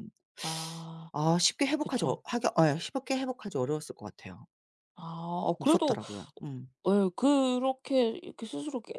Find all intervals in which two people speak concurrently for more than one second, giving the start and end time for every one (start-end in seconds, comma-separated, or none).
none